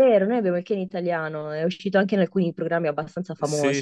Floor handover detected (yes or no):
yes